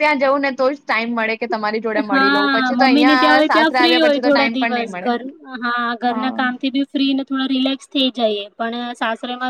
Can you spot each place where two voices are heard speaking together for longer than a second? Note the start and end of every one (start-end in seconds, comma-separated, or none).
2.1-5.1